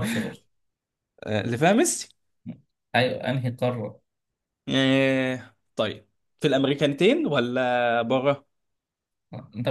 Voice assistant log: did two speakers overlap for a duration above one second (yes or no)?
no